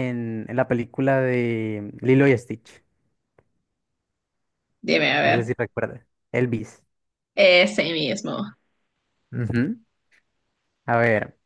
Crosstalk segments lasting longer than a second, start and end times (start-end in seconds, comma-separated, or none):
none